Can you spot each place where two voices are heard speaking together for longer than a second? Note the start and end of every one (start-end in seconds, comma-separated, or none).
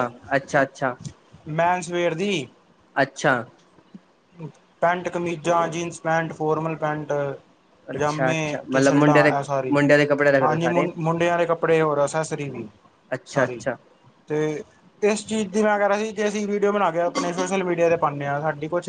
7.9-9.8